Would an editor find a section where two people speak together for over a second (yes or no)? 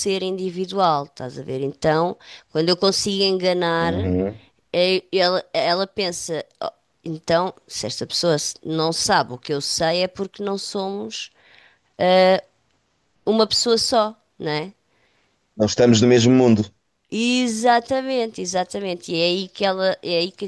no